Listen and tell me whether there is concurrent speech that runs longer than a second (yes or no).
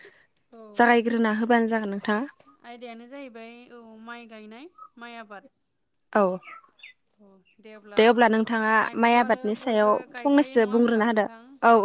yes